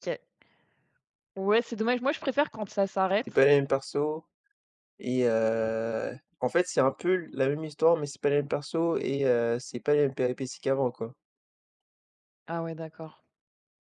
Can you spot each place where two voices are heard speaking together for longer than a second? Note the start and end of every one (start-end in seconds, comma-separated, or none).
none